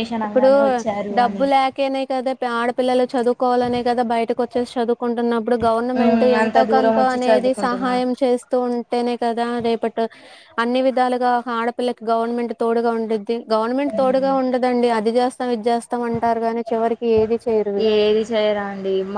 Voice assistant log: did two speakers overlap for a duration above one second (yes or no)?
yes